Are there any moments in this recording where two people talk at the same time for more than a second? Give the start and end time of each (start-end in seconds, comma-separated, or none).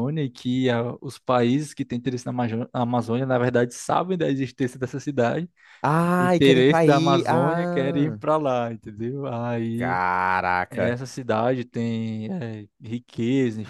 6.2-8.2